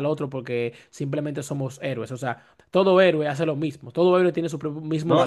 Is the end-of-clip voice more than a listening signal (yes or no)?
yes